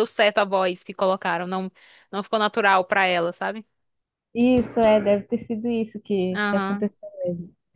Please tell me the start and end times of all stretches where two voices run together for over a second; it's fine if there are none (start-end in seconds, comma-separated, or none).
none